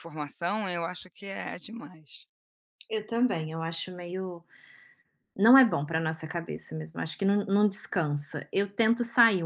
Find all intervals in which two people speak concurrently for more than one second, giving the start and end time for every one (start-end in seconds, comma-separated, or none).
none